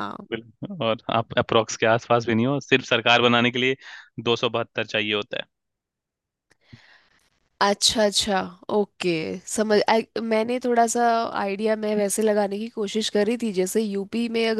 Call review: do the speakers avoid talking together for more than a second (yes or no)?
yes